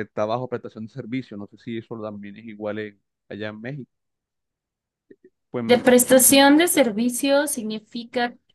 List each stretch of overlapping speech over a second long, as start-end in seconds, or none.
none